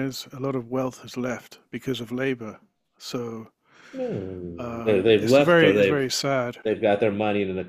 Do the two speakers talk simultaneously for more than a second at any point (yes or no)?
yes